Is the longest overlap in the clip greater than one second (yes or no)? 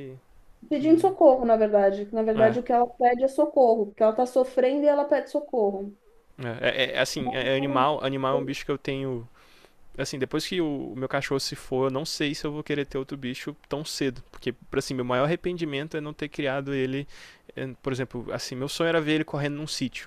yes